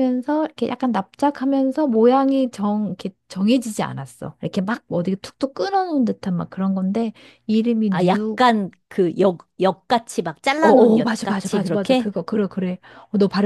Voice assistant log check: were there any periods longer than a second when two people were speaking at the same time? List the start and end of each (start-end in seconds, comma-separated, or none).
10.6-12.1